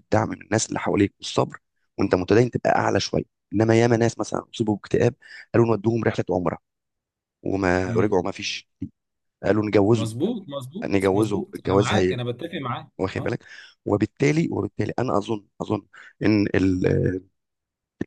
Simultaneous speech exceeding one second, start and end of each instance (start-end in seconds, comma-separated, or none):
10.8-12.2